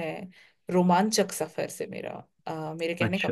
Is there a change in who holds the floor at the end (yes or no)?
yes